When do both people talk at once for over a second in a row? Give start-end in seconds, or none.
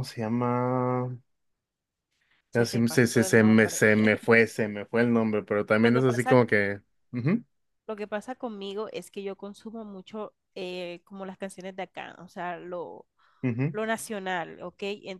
2.5-3.8